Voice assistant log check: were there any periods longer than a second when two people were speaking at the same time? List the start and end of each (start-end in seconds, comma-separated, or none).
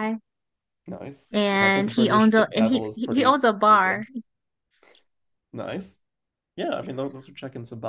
1.3-4.0